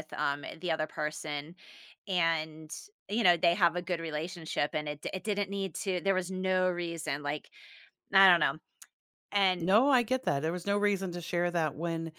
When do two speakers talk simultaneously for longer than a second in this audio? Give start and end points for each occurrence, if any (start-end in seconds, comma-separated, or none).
none